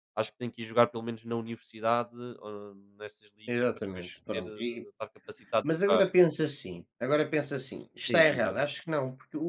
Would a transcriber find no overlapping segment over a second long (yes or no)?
no